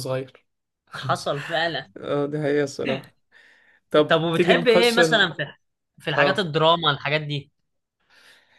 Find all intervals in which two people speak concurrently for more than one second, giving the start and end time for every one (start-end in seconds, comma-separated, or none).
4.1-5.3